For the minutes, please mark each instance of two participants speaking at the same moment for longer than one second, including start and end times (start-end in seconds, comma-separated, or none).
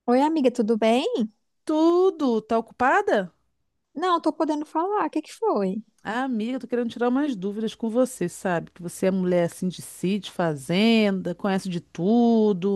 none